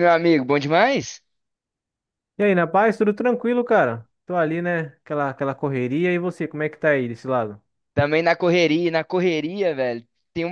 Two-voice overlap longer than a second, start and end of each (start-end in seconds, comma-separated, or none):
none